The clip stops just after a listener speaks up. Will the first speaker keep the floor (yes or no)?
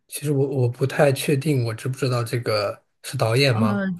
no